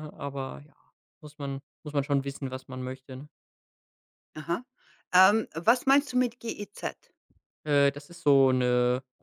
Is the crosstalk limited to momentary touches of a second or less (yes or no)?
yes